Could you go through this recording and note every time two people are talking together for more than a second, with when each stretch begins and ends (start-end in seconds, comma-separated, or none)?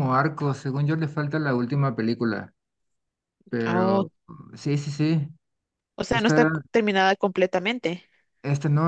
none